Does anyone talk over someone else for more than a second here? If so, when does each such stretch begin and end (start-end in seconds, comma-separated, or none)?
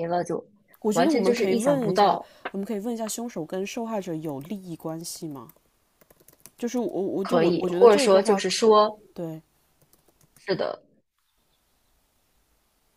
0.9-2.3, 7.2-8.4